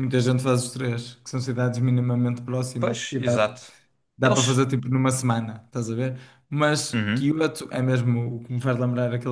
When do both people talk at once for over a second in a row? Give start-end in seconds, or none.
none